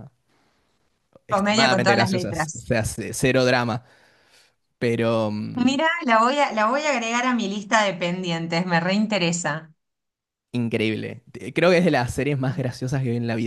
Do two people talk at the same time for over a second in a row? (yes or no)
yes